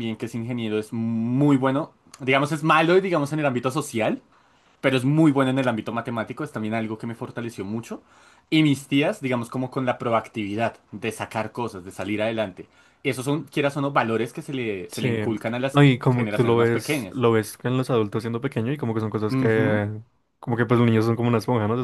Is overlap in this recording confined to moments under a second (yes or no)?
no